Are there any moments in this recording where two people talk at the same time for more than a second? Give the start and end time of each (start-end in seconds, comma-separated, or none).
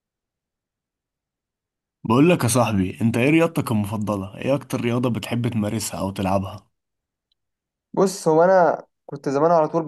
none